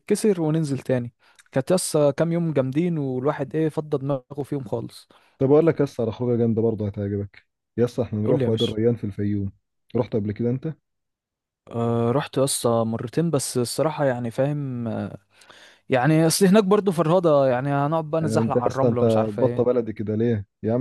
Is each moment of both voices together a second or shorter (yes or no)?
no